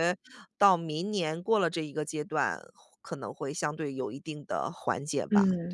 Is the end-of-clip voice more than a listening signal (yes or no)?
yes